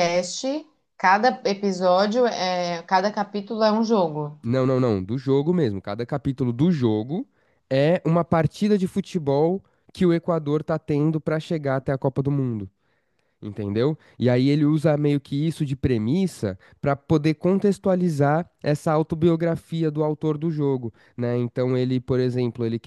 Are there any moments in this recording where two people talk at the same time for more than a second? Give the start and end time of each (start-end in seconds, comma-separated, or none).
none